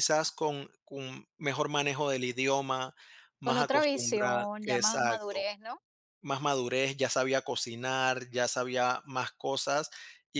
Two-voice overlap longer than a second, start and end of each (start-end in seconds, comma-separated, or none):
3.4-5.5